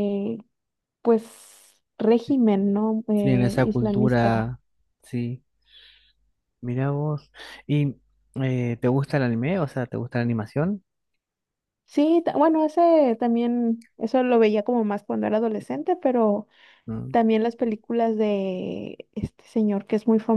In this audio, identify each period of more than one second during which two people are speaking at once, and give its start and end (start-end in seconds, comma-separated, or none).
3.2-4.5